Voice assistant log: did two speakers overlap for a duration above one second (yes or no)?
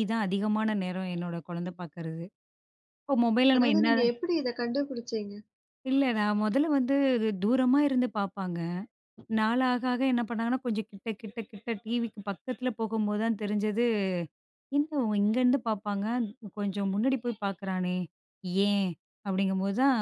no